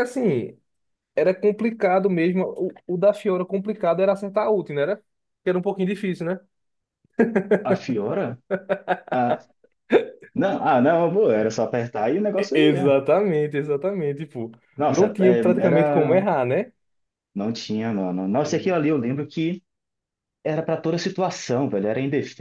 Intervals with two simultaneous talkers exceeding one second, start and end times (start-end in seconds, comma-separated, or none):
14.9-16.2